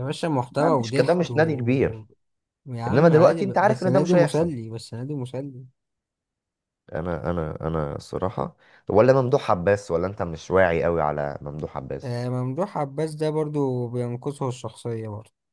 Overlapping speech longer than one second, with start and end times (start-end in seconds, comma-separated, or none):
0.5-2.0, 2.9-4.5